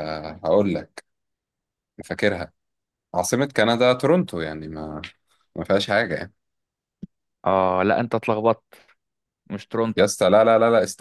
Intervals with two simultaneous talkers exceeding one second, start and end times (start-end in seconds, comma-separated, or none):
none